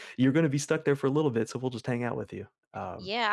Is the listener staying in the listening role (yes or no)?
no